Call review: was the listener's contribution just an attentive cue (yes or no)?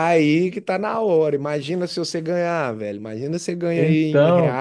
yes